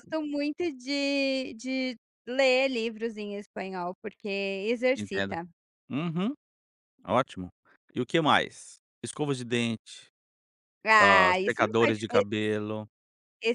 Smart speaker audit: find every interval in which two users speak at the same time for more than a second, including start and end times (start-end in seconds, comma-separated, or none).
11.0-12.2